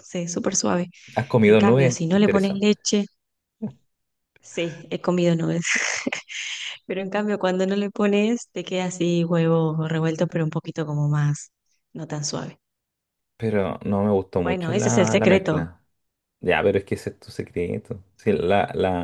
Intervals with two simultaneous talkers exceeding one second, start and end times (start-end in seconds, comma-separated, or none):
1.4-2.7, 14.4-15.6